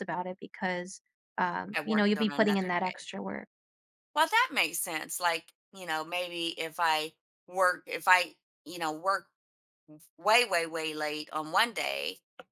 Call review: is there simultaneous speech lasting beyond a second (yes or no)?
yes